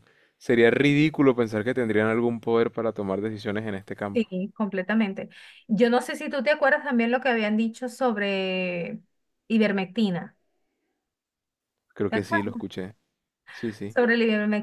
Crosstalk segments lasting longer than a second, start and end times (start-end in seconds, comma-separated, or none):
none